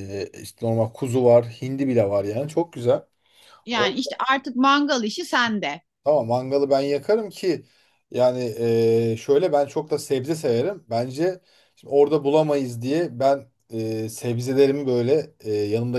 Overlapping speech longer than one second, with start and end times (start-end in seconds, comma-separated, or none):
none